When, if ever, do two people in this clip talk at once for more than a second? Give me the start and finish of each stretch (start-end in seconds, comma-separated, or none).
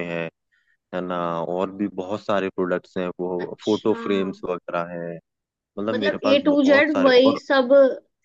5.9-7.4